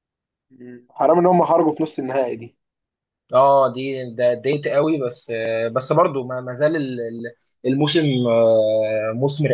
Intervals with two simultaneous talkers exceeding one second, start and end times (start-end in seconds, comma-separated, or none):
none